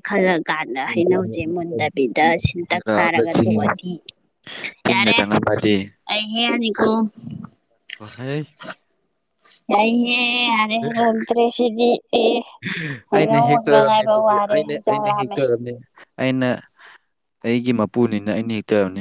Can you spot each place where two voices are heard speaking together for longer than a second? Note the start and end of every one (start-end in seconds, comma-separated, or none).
13.1-15.4